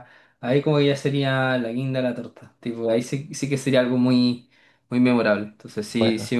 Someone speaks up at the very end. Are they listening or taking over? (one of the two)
listening